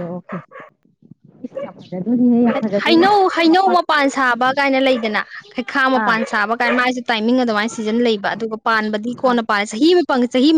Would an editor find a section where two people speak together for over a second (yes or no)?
no